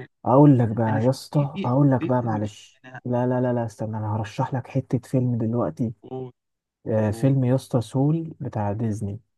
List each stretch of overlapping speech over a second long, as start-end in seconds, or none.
0.9-3.0